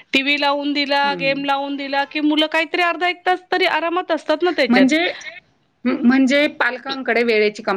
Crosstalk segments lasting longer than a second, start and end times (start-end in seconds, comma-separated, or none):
none